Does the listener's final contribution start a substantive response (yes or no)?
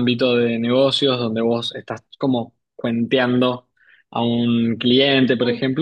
no